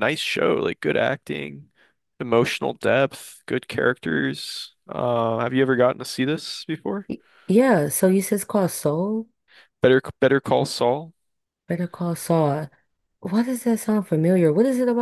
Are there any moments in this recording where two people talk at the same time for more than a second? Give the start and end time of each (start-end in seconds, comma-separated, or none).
none